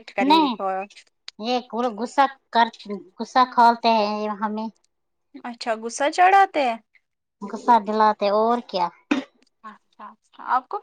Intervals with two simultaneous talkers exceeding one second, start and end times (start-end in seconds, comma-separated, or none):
none